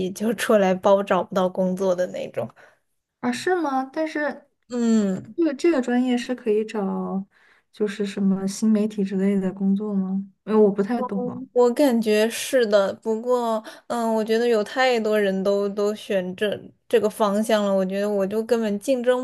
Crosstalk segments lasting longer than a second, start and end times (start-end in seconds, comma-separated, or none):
none